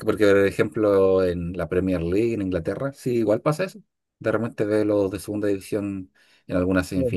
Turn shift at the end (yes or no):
no